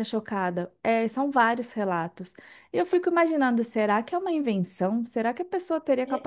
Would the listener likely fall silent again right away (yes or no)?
yes